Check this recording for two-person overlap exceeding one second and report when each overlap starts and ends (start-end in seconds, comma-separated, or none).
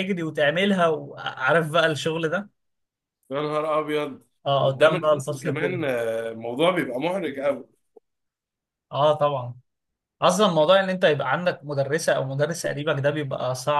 4.6-5.8